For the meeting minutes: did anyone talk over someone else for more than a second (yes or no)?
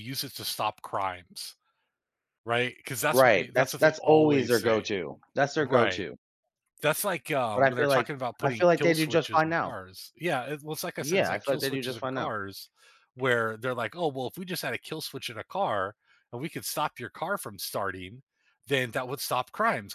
yes